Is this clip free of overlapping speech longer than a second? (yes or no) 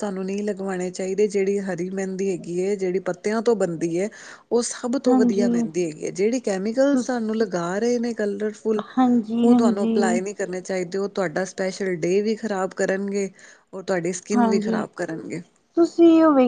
yes